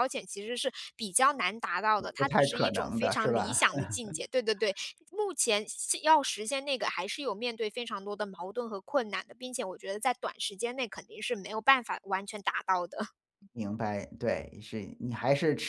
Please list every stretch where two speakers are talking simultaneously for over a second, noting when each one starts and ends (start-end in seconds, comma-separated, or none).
2.2-3.6